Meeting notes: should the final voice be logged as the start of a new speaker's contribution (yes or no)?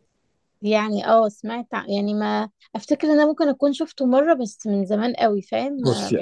yes